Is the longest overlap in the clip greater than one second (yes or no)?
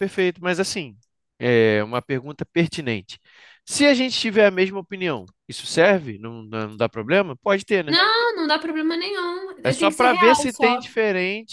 yes